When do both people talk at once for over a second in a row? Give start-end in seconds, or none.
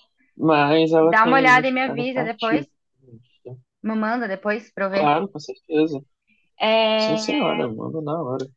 1.0-2.6